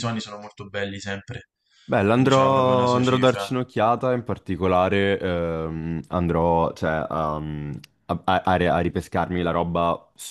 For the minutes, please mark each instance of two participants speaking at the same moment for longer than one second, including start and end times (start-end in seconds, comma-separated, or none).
2.1-3.5